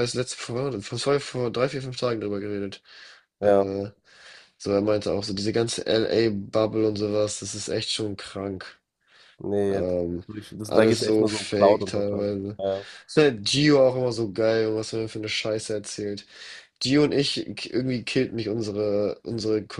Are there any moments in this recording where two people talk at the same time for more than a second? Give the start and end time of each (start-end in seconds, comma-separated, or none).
10.6-12.6